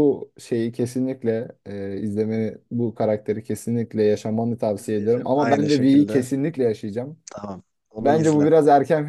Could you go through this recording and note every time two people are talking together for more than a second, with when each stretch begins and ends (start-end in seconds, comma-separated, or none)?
4.7-6.3